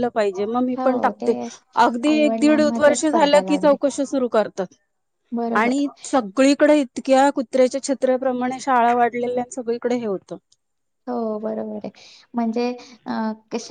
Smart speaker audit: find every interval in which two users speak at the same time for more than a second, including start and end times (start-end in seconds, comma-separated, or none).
2.1-3.8